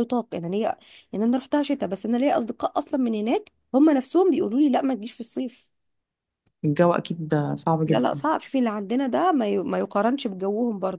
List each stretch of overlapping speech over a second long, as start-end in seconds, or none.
none